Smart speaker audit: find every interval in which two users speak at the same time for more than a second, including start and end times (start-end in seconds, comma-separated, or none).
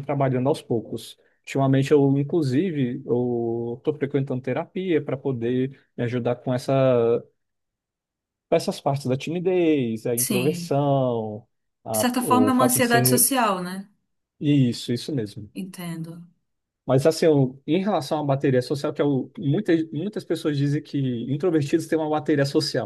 11.9-13.3